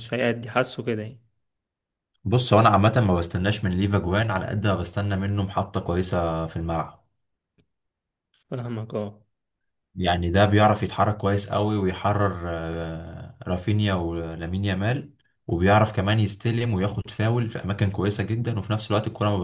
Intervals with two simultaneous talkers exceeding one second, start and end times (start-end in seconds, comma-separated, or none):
none